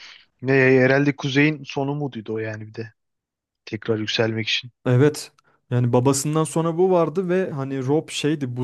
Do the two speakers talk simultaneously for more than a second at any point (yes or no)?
no